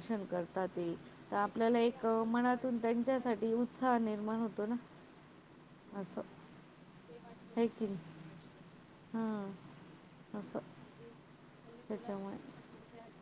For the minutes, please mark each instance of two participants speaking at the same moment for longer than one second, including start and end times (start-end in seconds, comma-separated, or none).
1.4-3.4